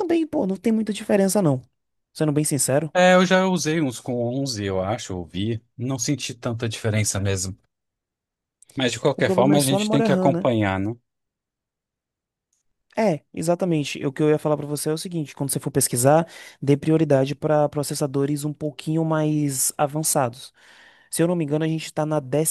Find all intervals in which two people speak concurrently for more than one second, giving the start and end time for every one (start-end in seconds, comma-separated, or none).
9.2-10.5